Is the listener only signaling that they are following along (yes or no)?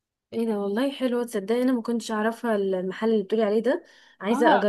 no